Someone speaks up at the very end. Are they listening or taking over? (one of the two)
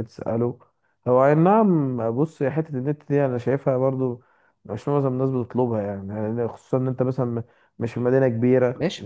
taking over